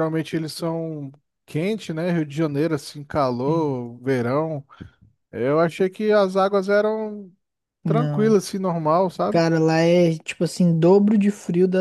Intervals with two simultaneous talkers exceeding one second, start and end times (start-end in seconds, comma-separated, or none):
none